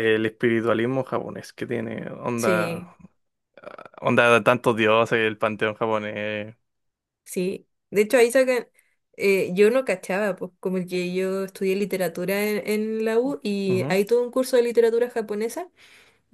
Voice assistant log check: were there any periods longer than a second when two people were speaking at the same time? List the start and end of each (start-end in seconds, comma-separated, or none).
none